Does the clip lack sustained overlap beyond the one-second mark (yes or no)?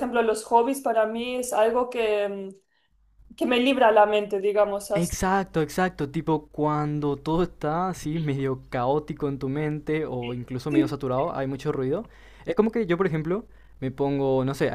yes